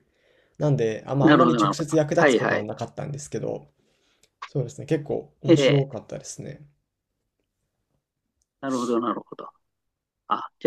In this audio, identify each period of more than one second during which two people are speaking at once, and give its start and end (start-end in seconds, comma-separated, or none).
1.2-2.7